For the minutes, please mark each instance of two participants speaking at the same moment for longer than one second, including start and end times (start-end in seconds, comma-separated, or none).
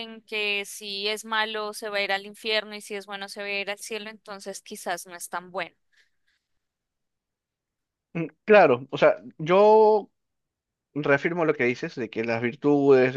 none